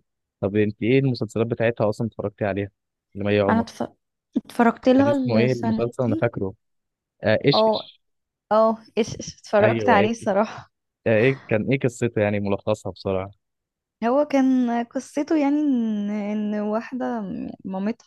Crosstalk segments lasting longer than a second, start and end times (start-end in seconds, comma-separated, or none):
5.0-6.3